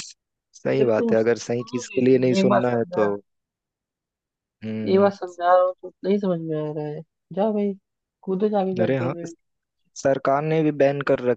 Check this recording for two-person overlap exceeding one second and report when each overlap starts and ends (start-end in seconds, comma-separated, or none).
0.8-3.1